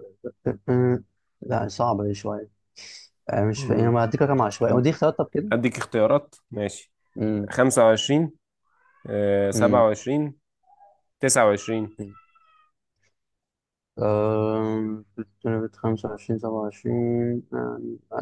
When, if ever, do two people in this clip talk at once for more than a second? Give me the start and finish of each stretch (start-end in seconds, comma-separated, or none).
none